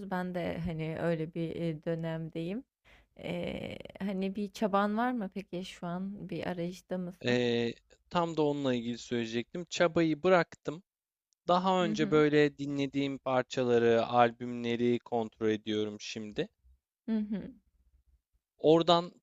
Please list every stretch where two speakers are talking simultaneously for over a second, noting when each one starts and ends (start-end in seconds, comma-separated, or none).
none